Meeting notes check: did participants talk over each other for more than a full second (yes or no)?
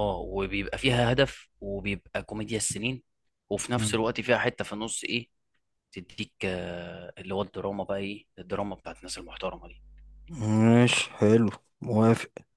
no